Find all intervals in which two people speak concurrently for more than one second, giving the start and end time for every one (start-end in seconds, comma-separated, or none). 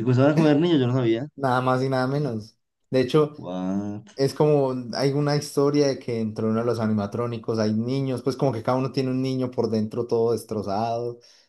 none